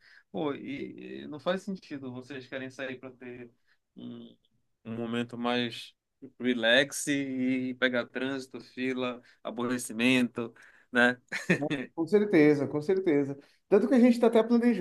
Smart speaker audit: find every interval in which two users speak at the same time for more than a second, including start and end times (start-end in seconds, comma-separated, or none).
none